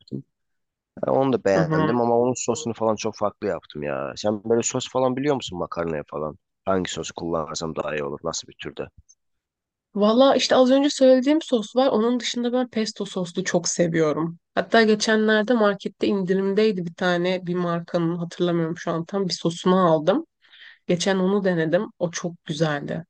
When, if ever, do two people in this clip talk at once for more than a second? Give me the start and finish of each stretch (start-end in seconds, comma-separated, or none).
none